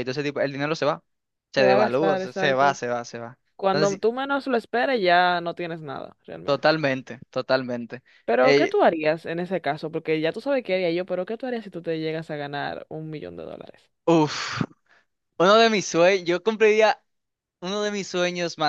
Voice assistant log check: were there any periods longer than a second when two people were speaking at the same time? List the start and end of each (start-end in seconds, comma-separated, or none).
1.6-2.8